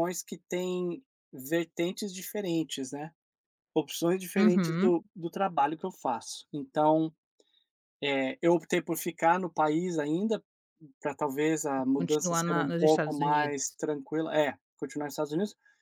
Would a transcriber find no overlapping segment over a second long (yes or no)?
no